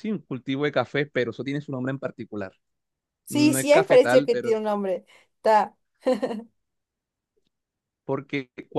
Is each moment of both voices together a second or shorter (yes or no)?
no